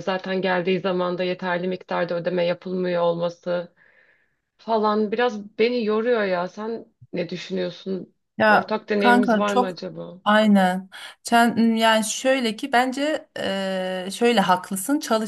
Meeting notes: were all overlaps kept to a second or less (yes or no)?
no